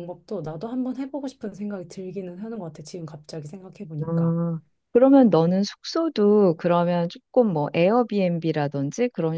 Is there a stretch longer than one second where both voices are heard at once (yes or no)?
no